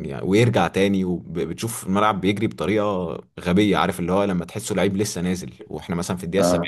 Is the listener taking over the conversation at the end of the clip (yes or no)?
no